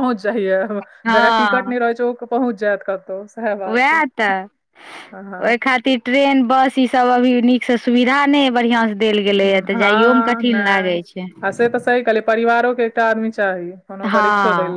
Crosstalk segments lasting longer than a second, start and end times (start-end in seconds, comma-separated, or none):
9.7-11.0